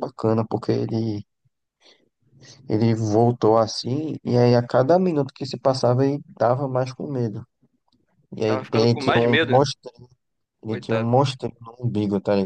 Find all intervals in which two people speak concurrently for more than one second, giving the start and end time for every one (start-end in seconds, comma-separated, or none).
8.4-9.7